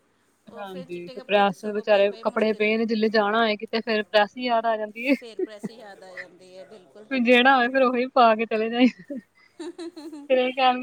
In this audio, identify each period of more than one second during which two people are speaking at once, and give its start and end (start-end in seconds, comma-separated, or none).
0.6-2.7